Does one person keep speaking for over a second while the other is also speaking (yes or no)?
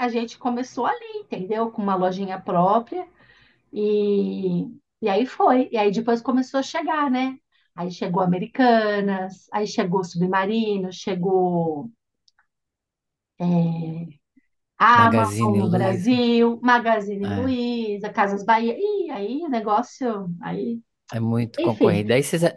yes